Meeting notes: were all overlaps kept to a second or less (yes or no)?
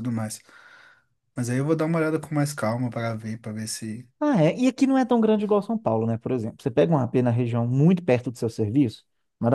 yes